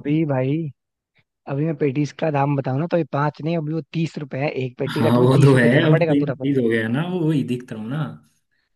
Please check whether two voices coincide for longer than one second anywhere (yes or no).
yes